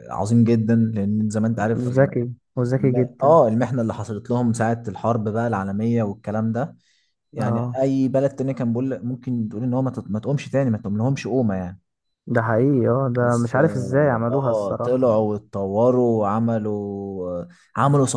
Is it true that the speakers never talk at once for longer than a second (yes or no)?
no